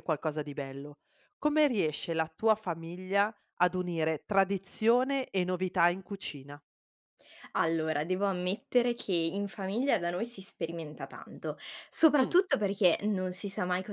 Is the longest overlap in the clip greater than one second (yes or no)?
no